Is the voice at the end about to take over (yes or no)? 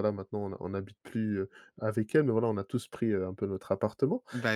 no